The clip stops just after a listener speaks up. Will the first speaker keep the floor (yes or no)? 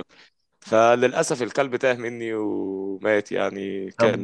no